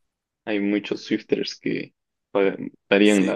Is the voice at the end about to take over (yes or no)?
yes